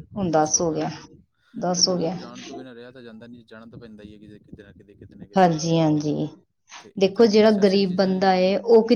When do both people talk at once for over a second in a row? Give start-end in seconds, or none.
7.0-8.3